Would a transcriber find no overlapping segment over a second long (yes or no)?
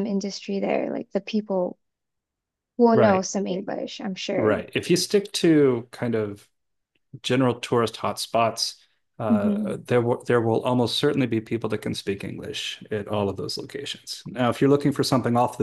yes